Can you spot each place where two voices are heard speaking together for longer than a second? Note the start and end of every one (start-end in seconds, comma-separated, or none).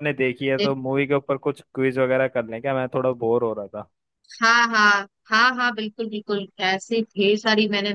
none